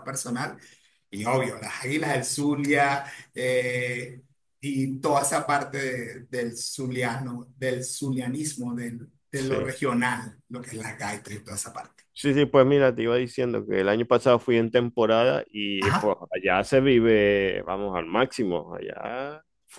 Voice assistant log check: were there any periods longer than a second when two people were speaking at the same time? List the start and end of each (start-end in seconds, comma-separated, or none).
none